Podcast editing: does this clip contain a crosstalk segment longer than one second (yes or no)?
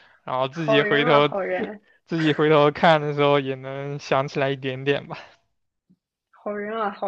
yes